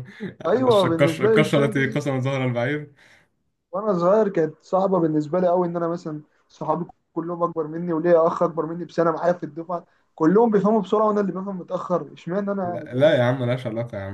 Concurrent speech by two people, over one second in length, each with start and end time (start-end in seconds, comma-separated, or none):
0.8-2.0